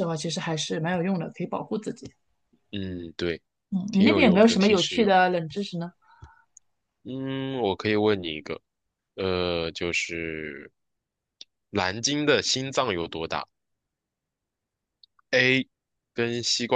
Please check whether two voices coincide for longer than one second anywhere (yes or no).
yes